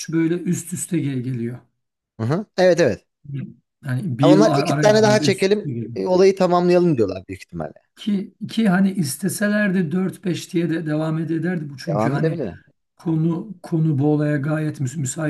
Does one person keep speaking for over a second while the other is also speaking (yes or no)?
yes